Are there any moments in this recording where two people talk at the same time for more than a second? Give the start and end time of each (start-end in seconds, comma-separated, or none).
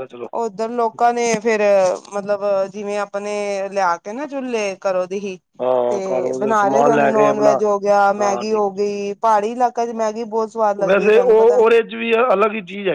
5.9-7.5